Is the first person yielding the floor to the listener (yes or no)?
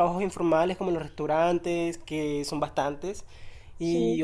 no